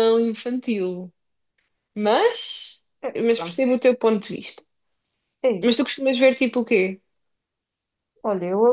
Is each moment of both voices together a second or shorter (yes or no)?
yes